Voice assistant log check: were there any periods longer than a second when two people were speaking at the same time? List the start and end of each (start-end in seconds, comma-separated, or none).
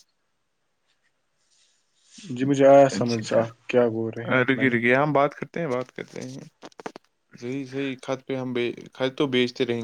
3.0-4.8